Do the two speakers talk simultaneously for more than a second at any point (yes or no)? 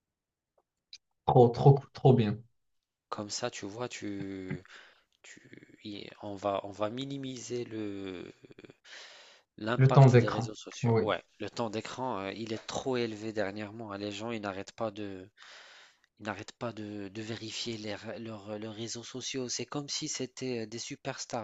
yes